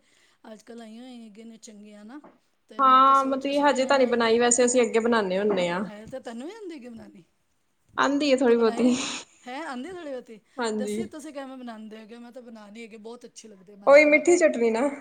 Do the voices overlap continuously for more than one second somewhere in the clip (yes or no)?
yes